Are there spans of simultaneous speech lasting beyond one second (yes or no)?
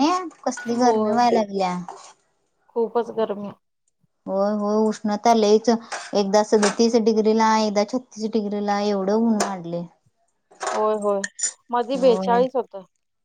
no